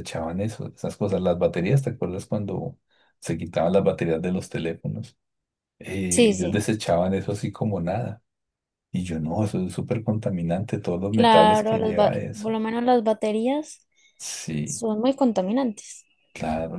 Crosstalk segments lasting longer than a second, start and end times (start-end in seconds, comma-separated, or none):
11.1-12.6